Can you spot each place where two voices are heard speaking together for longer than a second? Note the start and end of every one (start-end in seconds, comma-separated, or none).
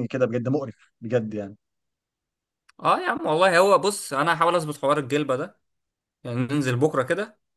none